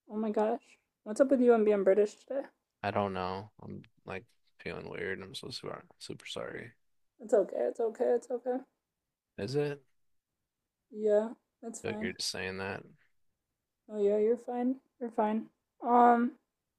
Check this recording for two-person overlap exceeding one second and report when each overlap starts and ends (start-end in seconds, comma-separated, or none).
none